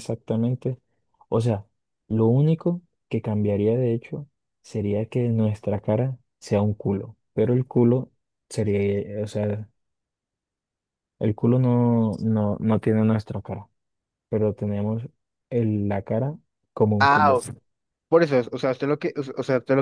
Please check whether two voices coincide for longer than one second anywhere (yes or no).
no